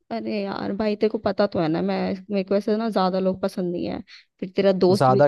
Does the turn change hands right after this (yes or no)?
no